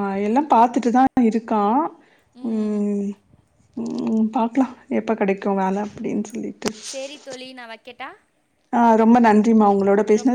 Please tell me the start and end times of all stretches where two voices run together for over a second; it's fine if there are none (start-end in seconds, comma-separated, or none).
none